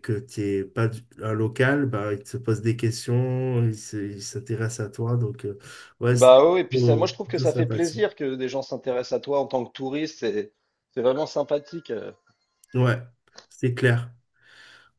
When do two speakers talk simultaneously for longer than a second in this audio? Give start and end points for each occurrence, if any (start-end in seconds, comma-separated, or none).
6.1-8.0